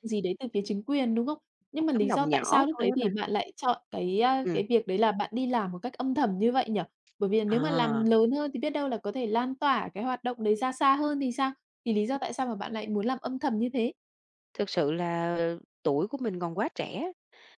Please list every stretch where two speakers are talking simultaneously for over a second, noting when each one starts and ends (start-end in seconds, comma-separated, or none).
1.8-3.1